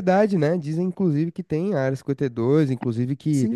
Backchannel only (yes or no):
yes